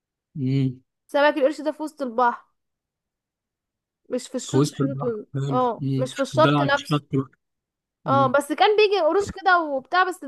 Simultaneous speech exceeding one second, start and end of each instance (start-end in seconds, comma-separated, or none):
4.5-7.0